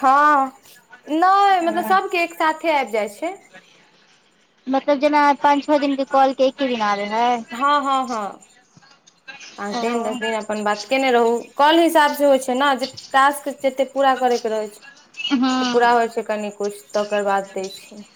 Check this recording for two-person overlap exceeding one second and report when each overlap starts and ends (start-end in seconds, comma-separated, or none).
none